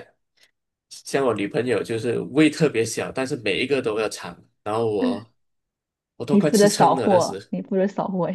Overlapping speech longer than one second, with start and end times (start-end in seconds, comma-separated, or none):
6.3-7.5